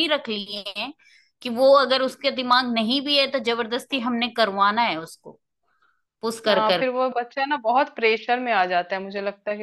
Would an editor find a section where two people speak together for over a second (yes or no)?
no